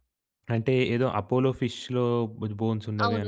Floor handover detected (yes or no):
yes